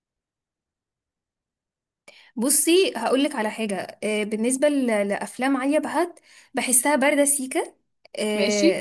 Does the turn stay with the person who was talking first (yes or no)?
yes